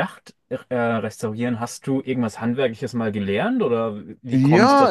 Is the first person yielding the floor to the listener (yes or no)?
yes